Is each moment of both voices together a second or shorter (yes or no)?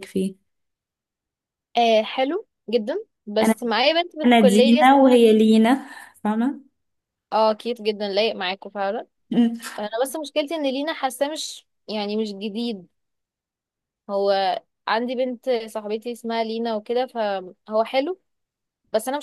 no